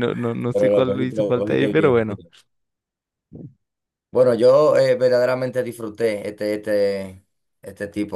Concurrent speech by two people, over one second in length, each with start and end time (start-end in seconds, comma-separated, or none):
0.5-2.2